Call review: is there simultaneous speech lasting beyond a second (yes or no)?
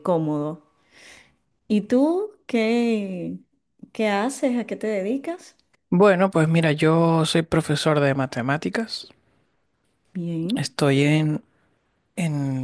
no